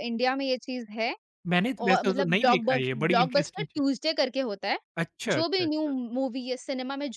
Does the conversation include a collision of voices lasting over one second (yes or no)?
yes